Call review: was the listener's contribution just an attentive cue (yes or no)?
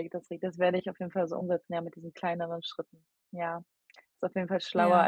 yes